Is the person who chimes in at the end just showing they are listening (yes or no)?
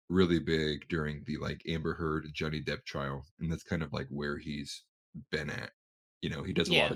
yes